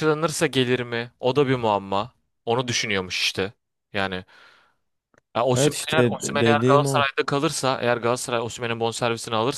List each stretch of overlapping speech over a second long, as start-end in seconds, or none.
5.5-7.1